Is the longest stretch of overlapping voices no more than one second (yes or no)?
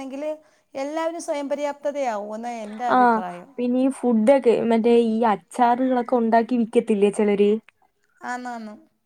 yes